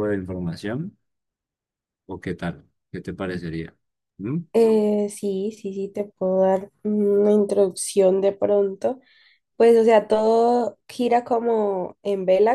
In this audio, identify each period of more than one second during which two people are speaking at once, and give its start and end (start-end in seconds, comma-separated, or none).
none